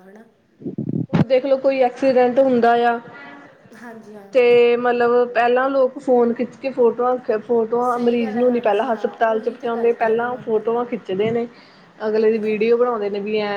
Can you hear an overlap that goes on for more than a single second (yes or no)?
yes